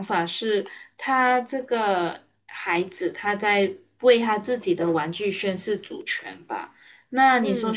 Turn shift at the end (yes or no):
no